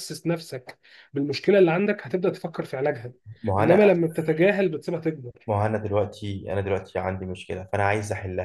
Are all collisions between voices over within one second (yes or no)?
yes